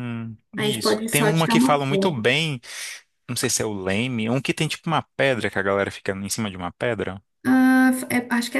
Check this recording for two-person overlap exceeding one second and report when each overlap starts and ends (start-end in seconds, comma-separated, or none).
0.6-2.2